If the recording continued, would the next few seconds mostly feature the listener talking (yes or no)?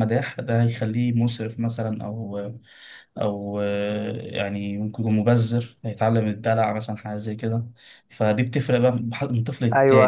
yes